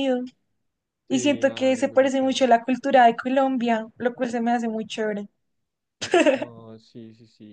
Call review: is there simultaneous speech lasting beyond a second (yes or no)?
yes